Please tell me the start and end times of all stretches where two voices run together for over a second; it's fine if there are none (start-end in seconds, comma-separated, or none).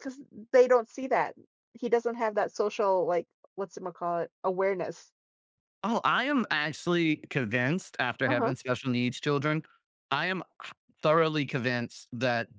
none